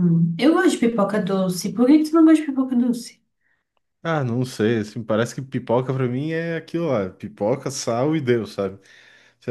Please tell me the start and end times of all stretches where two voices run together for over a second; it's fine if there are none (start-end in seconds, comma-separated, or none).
none